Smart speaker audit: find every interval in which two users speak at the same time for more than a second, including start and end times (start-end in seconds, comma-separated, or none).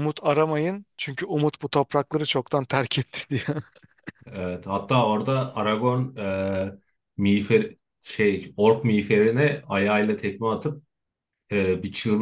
none